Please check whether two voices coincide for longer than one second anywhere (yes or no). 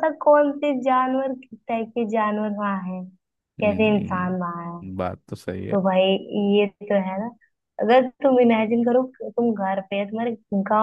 yes